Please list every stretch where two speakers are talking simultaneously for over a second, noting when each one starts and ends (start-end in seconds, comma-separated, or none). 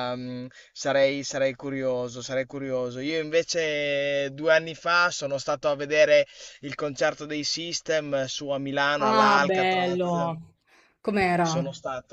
9.0-10.3